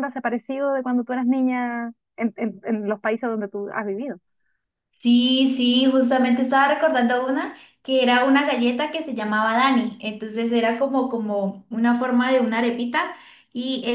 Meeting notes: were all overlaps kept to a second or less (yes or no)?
yes